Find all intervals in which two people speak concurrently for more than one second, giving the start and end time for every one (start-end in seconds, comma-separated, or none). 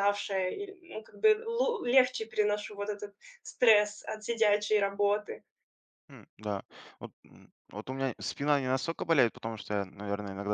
none